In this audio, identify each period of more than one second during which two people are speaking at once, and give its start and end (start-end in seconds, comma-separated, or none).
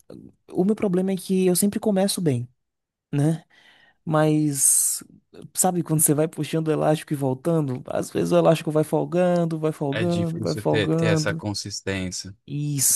9.9-11.4